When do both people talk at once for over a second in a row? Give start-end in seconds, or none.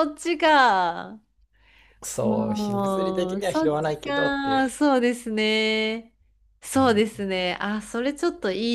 2.2-4.7